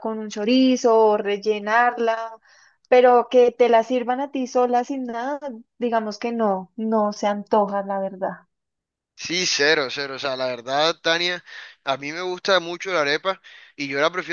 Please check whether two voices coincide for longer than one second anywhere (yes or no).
no